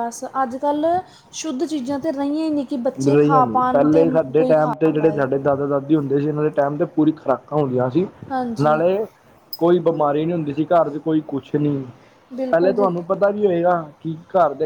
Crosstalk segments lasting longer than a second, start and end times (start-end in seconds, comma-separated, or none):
3.1-5.2